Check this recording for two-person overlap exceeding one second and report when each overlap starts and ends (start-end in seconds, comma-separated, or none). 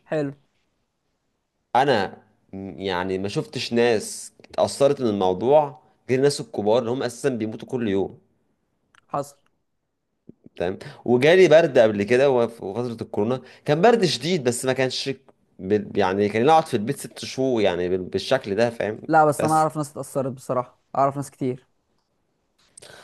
none